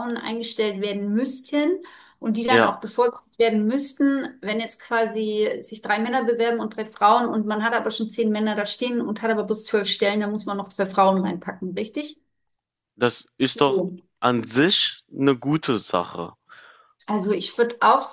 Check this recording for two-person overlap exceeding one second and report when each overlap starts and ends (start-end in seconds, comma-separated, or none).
none